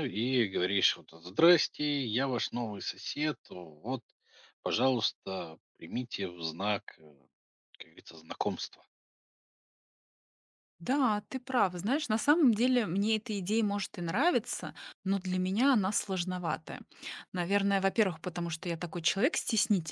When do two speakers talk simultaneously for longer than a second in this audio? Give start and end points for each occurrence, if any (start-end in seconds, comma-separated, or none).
none